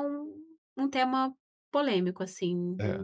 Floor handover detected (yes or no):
yes